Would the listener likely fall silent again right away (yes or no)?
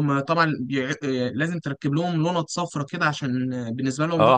no